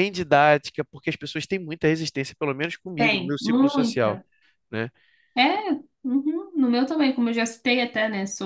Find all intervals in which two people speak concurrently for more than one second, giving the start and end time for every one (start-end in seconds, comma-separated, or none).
3.0-4.2